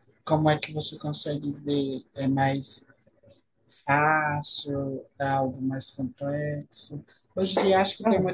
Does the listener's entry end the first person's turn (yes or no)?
no